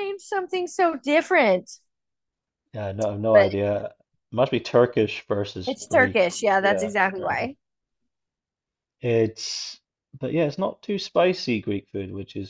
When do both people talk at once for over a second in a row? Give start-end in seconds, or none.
5.7-7.5